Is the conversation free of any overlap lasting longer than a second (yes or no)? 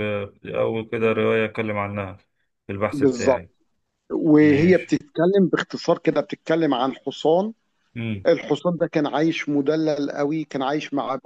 yes